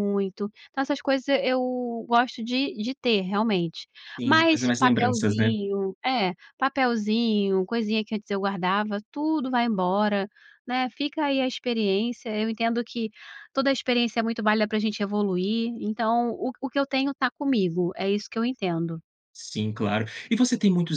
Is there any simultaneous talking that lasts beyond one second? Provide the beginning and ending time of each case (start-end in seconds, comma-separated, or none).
4.2-5.5